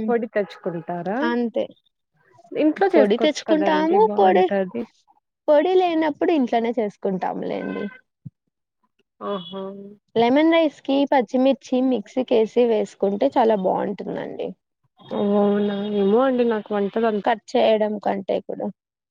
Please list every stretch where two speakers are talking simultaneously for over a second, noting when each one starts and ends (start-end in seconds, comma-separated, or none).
2.9-4.4